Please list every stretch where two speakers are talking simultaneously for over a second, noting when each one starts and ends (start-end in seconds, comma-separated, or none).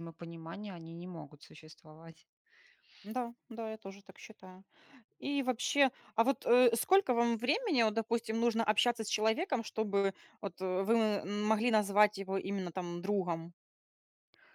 none